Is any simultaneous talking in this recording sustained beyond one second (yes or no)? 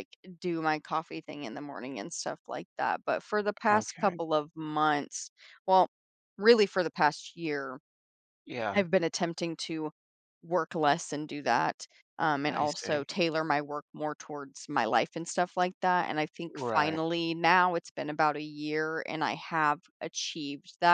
no